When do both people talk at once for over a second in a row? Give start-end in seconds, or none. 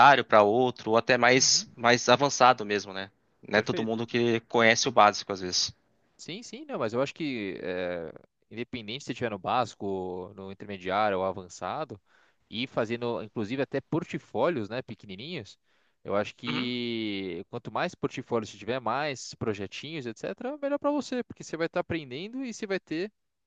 none